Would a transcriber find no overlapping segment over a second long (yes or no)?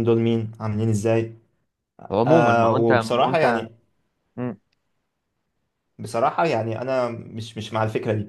no